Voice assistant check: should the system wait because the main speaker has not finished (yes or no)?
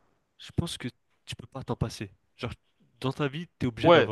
no